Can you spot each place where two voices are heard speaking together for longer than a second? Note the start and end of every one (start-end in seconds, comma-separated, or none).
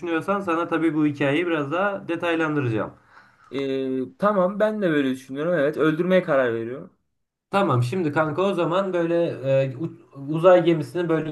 none